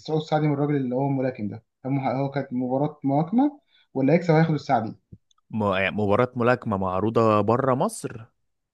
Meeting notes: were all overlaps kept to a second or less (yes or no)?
yes